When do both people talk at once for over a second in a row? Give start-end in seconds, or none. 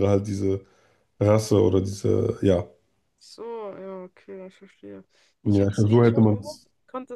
5.4-6.7